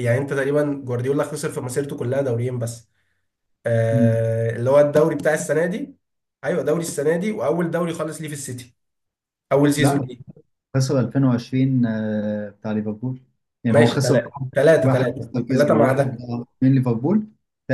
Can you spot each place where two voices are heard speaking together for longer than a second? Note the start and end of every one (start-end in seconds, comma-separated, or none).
13.7-16.1